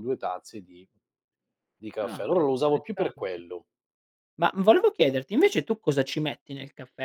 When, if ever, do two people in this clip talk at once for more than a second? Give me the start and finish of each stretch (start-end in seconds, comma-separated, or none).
2.0-3.4